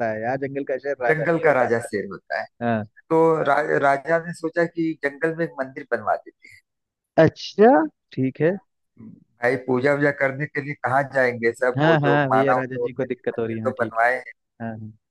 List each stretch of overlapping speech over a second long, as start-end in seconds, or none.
11.8-14.0